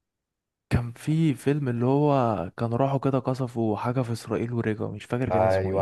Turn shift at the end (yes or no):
yes